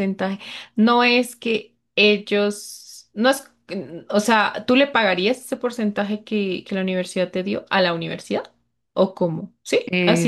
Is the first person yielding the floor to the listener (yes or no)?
yes